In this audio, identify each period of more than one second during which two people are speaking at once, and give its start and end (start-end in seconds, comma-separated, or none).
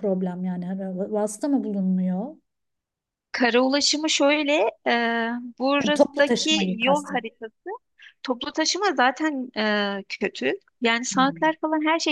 5.8-7.2